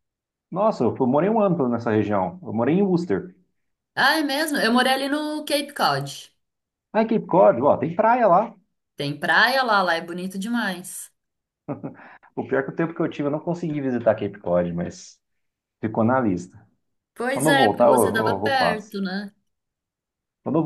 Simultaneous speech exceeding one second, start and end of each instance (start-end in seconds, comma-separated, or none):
17.3-19.0